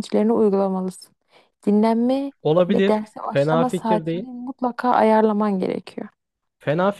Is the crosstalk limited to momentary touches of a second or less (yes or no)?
no